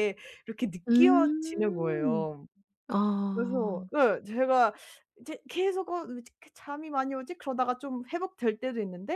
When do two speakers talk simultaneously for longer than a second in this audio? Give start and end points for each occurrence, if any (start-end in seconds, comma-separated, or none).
0.9-2.3